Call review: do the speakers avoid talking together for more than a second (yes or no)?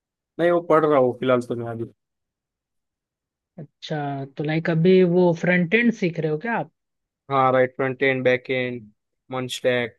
yes